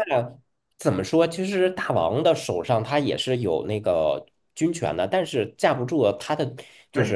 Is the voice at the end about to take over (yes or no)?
yes